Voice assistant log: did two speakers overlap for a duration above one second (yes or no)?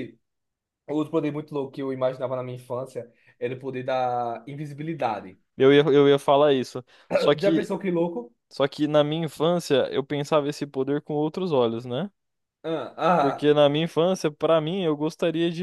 no